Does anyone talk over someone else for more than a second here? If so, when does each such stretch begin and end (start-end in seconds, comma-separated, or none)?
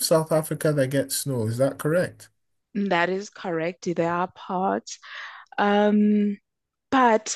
none